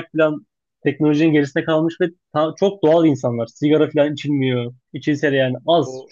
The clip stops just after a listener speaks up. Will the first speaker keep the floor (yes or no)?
yes